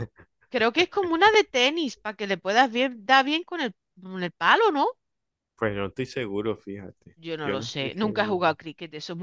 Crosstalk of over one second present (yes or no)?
yes